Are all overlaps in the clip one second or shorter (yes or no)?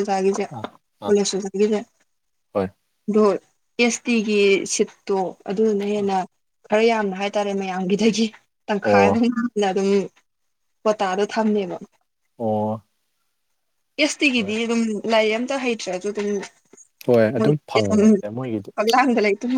no